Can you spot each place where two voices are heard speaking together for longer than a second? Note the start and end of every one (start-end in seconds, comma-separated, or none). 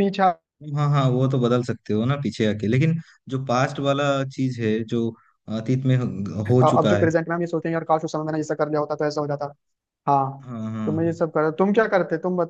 none